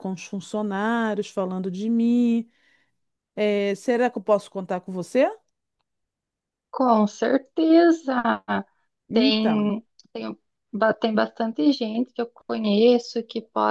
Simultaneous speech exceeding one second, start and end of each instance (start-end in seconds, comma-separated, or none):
none